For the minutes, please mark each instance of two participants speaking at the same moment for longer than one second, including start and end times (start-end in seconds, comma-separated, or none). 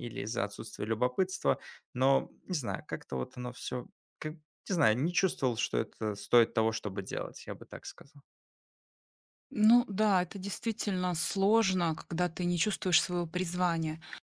none